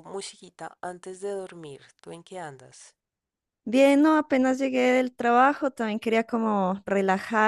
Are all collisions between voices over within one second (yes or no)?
yes